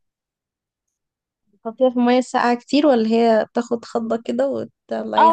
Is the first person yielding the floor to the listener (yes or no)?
yes